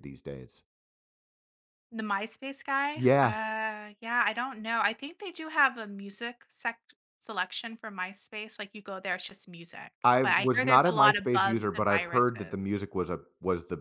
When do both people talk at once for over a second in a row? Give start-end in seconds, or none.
10.0-12.8